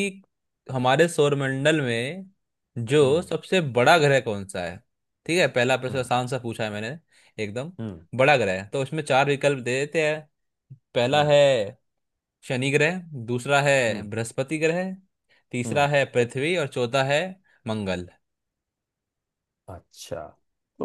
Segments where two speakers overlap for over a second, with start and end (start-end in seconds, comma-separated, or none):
none